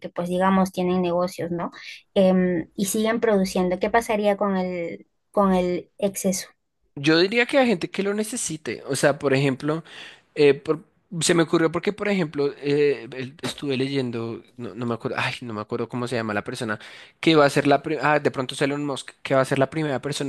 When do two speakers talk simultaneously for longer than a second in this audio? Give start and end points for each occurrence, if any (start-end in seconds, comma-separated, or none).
none